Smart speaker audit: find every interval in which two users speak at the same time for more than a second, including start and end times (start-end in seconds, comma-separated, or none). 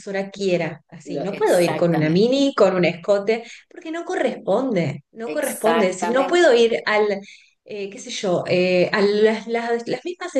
1.1-2.4, 5.2-6.6